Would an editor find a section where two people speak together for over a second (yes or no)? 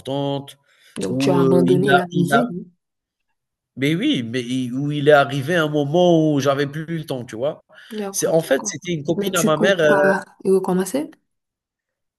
yes